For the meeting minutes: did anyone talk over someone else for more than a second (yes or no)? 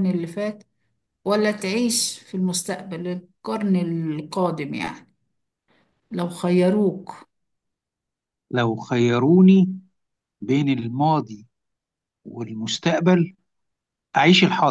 no